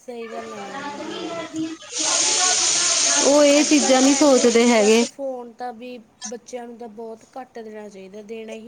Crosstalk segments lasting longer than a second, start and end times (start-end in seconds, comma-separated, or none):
3.6-5.0